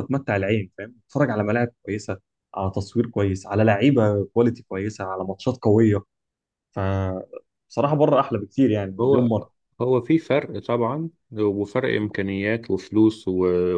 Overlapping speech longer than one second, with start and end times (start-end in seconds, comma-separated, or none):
none